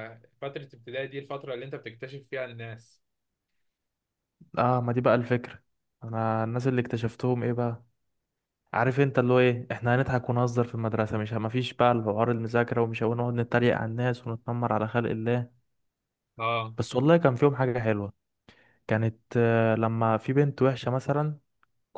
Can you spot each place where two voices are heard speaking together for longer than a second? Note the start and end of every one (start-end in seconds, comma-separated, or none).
none